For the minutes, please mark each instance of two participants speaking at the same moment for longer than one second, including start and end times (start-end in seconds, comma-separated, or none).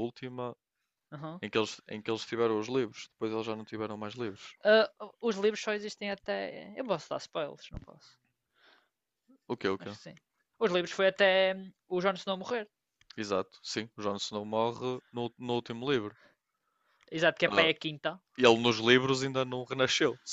none